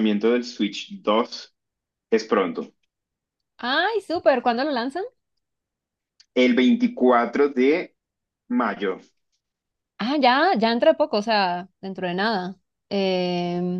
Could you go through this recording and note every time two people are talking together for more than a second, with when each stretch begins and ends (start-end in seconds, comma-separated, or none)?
none